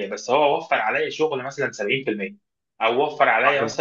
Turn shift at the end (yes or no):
no